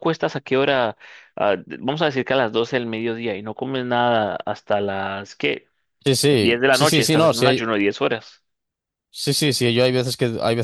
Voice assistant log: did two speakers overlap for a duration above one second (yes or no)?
yes